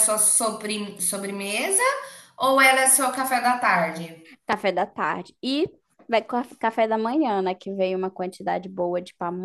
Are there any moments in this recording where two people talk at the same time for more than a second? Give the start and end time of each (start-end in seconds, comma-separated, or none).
none